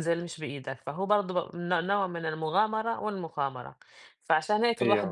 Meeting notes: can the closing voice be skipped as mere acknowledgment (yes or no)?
yes